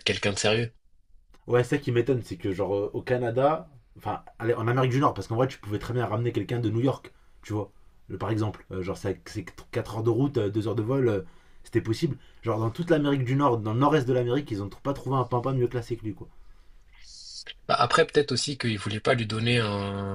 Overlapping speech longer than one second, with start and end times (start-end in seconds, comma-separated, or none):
none